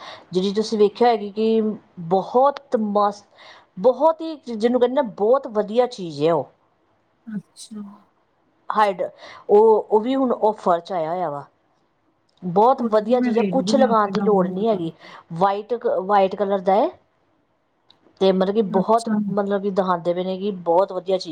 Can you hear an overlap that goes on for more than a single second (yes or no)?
yes